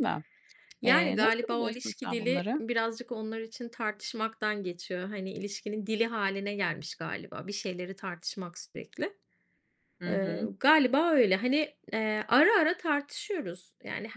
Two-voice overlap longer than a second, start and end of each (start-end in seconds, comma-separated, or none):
0.9-2.6